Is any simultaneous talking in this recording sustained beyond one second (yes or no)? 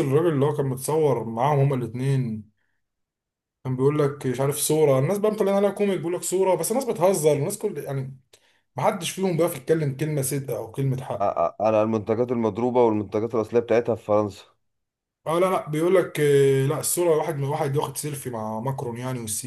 no